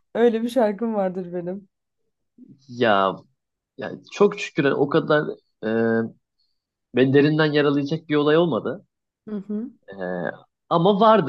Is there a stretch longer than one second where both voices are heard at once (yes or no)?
no